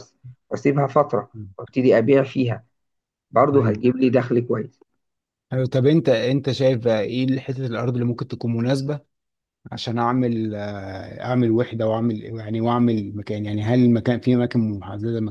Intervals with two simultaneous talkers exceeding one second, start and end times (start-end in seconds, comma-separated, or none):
none